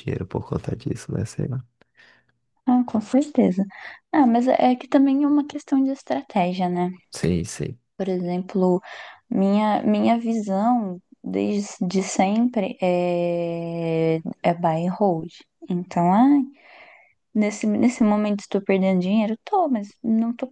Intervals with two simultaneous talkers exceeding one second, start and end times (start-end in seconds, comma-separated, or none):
none